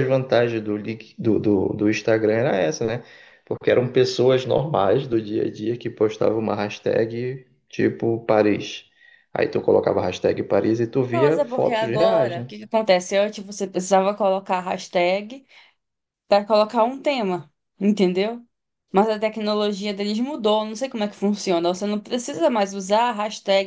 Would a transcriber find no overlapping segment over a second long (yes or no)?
no